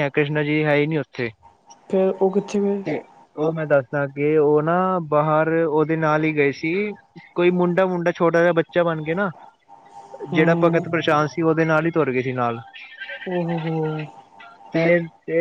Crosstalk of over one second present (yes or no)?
no